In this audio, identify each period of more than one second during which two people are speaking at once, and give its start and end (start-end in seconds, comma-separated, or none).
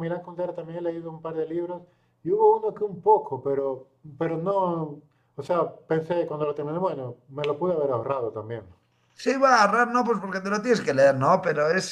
none